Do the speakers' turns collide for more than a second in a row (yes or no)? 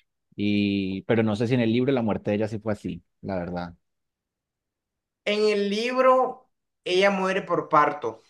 no